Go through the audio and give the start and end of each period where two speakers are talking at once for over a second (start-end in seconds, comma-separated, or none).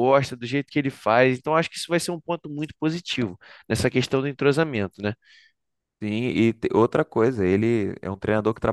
none